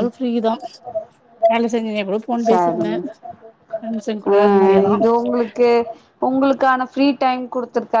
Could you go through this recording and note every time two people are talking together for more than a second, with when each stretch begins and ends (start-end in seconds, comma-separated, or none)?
none